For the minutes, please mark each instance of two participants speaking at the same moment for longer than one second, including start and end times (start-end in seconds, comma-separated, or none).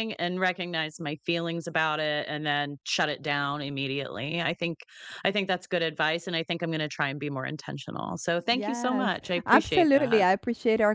8.5-10.2